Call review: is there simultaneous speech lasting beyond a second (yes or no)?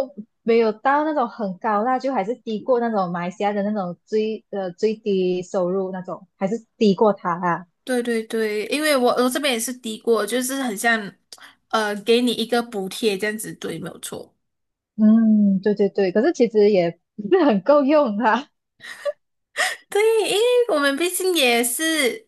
no